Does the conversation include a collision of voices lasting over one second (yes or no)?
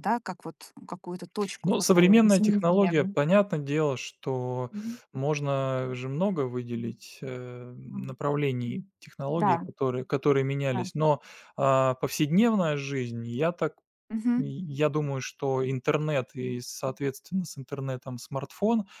yes